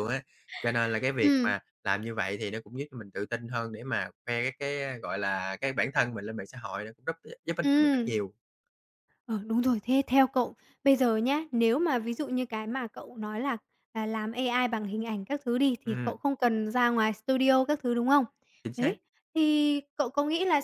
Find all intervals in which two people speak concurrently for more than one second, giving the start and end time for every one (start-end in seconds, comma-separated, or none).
none